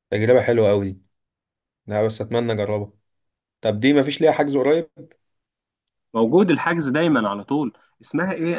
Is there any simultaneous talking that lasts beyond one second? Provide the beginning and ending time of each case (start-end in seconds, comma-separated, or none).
none